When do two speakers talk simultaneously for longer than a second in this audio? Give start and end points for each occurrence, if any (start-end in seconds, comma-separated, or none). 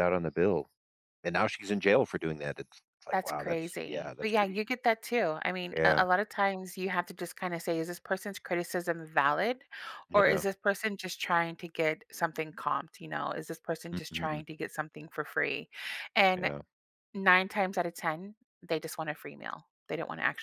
3.1-4.6